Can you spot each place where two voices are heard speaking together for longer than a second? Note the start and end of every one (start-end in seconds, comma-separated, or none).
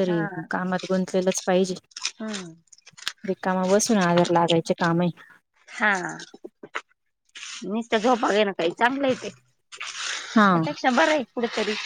none